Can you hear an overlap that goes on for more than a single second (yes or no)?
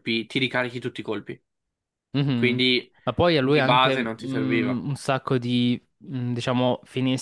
yes